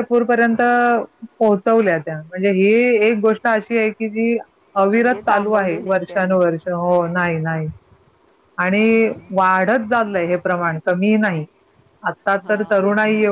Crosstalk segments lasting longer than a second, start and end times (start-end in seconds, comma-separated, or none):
4.9-6.4